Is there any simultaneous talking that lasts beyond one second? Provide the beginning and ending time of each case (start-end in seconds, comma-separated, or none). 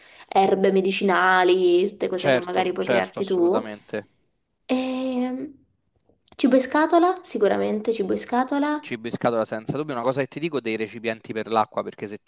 2.1-3.6